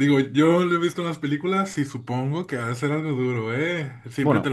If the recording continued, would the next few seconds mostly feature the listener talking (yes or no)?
no